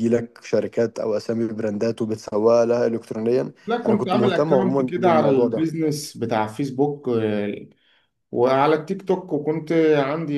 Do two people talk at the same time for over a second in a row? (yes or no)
yes